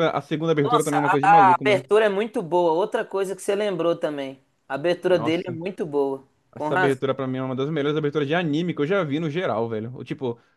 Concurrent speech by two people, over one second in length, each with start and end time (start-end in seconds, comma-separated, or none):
0.6-1.9